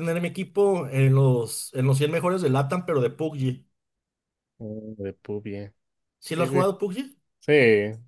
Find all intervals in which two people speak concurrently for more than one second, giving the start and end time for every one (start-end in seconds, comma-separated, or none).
none